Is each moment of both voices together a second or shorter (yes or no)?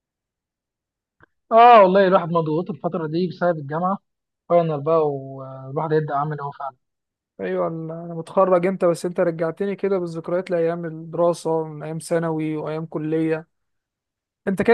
yes